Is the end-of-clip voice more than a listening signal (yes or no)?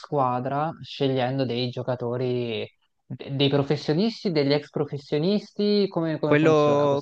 yes